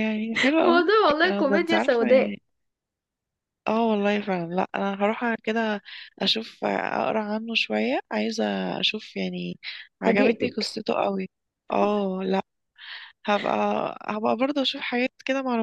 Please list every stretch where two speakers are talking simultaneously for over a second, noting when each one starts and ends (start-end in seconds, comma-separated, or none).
0.6-2.4